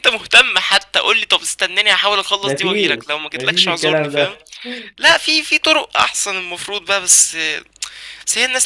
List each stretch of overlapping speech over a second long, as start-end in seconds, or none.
2.4-4.4